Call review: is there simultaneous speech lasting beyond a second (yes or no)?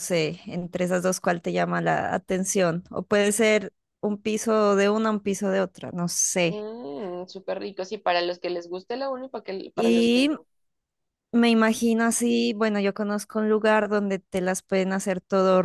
no